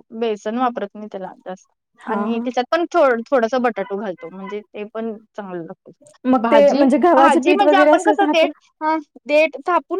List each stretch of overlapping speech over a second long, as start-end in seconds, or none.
6.4-8.5